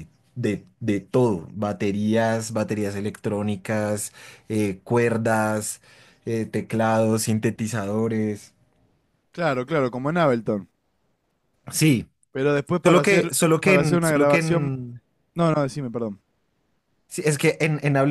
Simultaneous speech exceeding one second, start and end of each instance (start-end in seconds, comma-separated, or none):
12.8-14.8